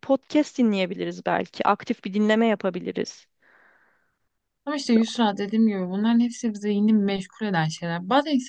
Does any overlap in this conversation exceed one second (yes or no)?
no